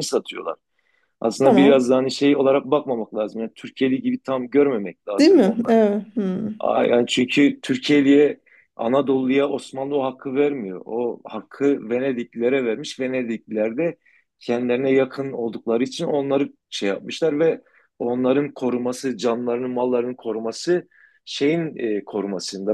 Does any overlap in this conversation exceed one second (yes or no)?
no